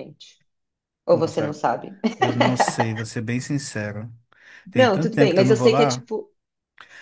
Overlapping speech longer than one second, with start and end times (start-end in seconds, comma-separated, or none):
4.8-6.0